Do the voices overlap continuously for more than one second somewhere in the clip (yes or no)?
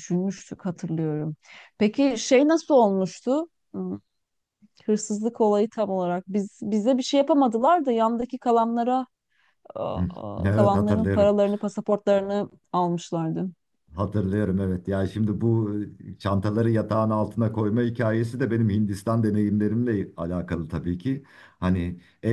yes